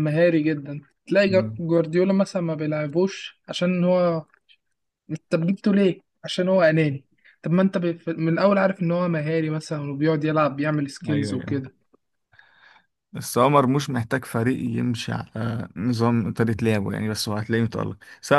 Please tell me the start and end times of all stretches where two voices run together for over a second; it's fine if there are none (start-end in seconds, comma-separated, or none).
none